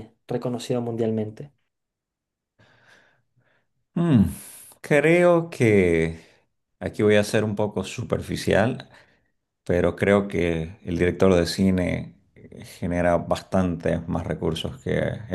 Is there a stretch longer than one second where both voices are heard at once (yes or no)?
no